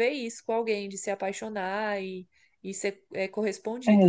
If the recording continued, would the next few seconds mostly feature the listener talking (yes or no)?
yes